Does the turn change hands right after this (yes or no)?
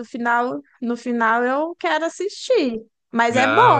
yes